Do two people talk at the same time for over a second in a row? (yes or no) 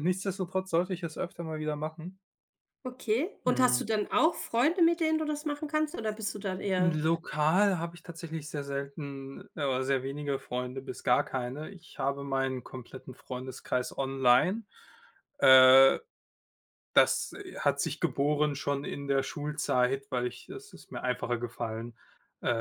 no